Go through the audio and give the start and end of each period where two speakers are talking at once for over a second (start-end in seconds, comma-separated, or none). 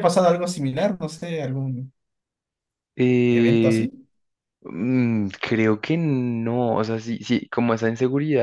none